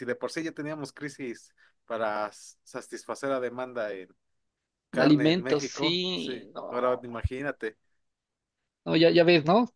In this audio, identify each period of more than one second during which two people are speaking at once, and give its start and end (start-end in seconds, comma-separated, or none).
4.9-7.0